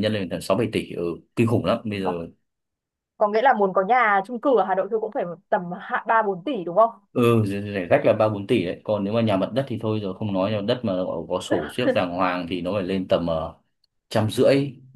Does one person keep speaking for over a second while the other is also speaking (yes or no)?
no